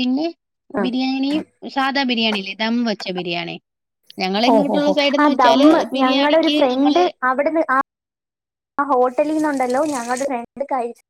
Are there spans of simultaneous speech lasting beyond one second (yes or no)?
yes